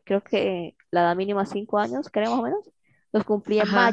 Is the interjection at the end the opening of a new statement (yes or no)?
no